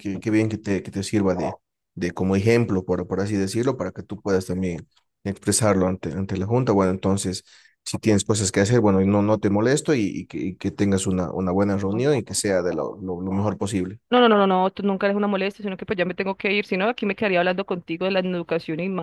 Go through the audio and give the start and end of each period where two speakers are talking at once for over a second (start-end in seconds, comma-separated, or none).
none